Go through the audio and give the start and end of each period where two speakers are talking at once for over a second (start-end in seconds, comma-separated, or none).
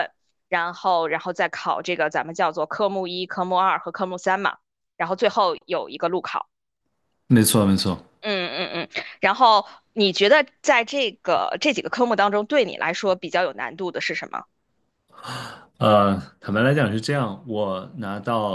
none